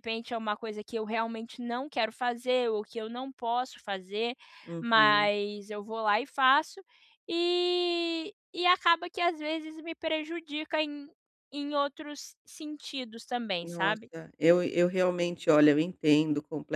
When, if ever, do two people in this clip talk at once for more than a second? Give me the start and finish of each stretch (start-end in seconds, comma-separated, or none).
none